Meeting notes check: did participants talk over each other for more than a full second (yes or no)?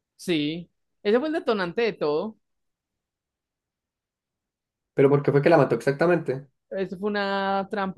no